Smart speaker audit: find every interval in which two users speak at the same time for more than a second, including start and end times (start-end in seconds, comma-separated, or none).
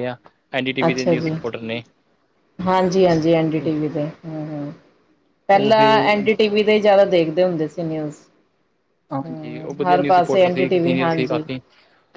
9.2-11.4